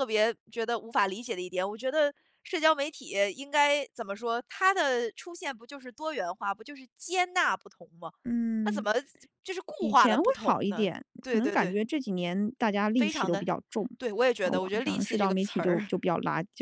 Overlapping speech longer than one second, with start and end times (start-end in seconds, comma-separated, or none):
9.8-11.8, 14.4-15.9